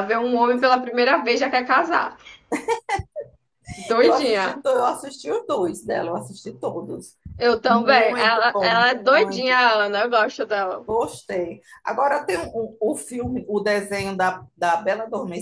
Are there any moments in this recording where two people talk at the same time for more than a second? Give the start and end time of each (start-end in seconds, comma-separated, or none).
7.7-9.6